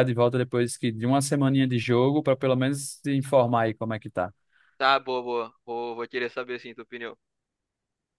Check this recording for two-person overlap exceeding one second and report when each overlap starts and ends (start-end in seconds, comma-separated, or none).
none